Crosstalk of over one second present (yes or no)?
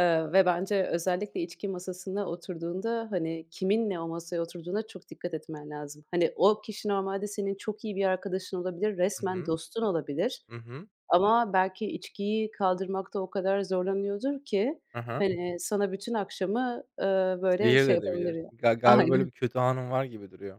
yes